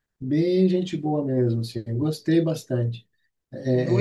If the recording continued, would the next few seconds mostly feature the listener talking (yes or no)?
yes